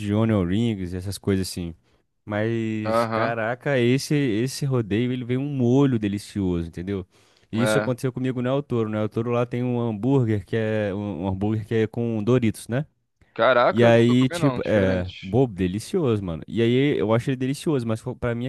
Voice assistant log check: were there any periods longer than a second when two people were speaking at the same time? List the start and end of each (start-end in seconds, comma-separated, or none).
13.7-15.4